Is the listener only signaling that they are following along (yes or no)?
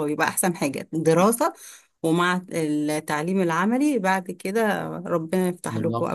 no